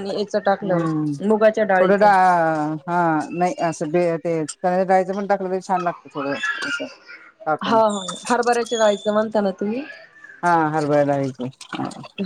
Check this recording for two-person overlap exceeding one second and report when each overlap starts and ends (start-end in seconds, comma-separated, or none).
none